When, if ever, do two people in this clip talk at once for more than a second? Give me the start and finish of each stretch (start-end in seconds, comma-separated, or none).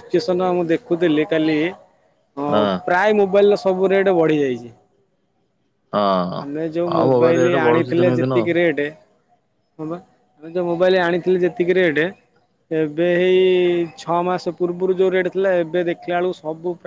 6.9-8.5